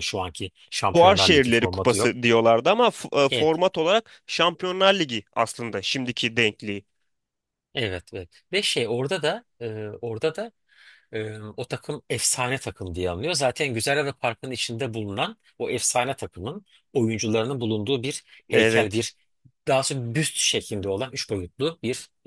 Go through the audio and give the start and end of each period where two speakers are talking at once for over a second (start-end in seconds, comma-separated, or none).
0.9-2.1